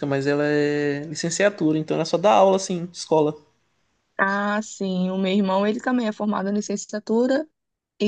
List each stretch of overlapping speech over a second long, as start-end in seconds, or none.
none